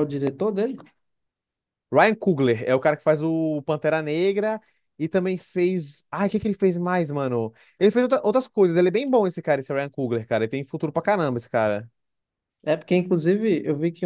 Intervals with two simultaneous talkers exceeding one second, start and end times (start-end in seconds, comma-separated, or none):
none